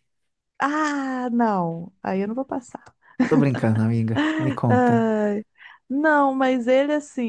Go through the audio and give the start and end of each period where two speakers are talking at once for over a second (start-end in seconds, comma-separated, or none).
none